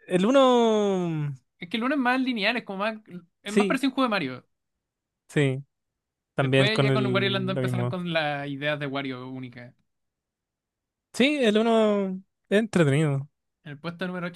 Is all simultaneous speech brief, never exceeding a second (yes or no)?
no